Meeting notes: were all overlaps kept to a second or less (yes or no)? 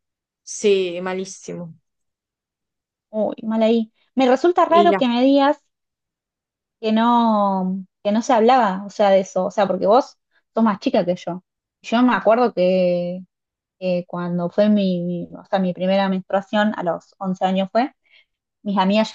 yes